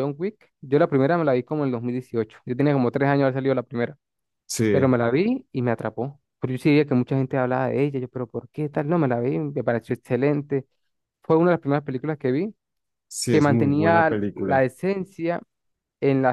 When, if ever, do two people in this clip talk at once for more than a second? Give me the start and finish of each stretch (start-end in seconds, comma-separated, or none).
13.3-14.6